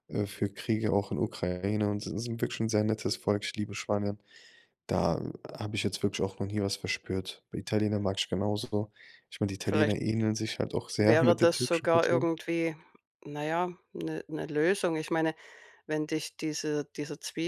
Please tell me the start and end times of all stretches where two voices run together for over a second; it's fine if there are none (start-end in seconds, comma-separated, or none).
11.0-12.3